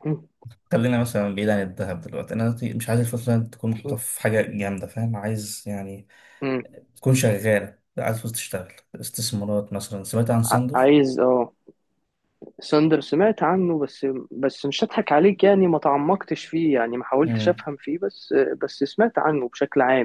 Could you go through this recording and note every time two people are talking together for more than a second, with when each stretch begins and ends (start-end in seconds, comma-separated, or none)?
none